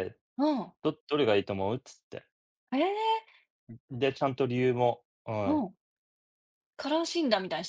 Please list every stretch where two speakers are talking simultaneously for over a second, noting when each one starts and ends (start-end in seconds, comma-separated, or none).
none